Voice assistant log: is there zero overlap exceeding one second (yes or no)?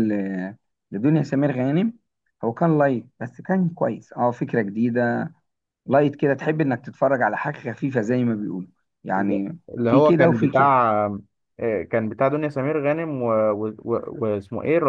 no